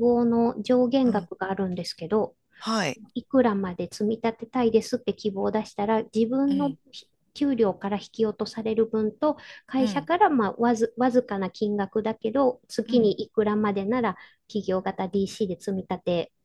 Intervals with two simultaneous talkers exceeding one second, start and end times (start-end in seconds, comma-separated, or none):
none